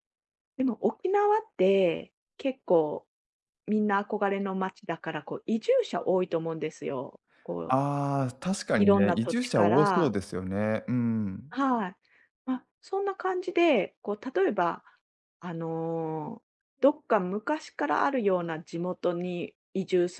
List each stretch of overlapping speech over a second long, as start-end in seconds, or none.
8.8-10.1